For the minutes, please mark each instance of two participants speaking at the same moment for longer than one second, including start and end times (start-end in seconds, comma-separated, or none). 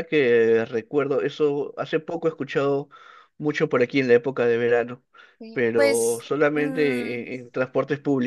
5.5-7.3